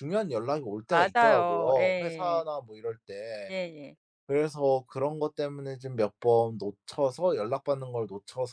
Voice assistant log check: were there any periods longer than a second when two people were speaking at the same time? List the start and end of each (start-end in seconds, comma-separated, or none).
0.9-2.4